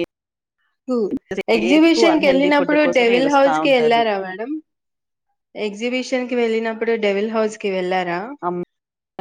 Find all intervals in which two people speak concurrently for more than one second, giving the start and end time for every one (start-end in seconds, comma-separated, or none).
1.5-4.0